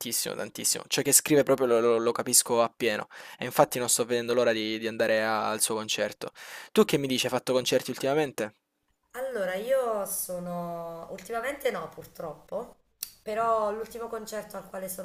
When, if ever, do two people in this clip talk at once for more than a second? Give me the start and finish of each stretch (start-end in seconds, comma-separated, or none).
none